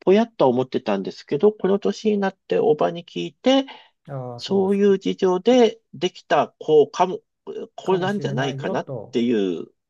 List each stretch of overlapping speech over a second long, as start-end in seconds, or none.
7.8-9.2